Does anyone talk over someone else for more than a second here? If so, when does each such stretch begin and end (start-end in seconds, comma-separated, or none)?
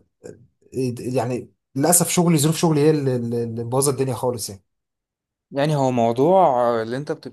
none